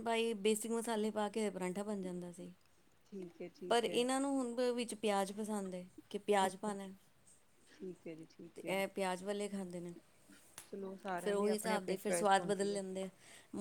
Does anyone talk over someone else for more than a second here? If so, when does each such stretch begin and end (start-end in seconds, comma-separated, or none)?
11.2-12.8